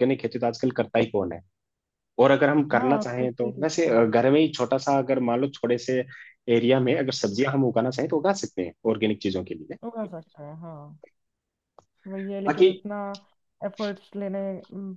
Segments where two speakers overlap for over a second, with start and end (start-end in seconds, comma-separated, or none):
2.7-4.1